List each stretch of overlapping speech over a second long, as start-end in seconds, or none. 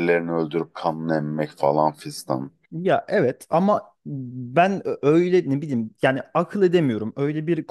none